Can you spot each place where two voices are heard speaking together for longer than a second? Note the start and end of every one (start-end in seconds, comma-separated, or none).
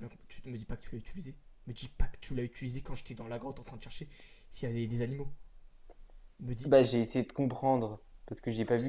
none